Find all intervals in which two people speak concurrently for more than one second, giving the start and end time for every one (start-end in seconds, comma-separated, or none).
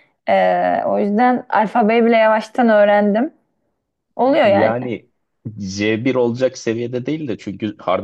none